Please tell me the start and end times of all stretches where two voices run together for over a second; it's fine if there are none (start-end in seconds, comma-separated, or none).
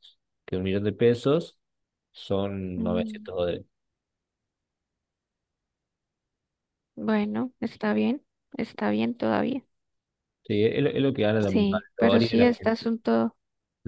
11.5-12.9